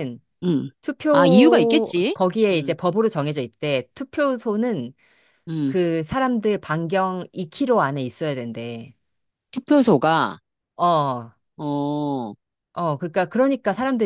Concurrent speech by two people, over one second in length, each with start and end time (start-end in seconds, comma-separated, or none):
1.1-2.8